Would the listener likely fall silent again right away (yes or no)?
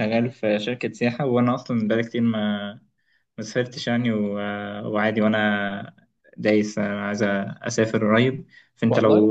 yes